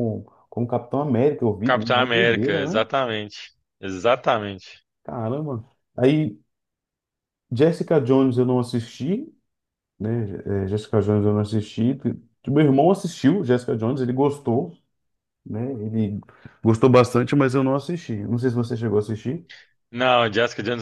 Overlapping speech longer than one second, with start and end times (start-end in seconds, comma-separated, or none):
1.6-2.9